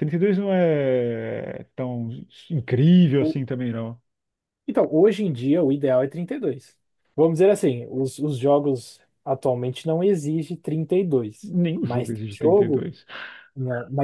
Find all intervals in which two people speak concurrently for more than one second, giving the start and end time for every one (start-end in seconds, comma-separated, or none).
11.4-12.9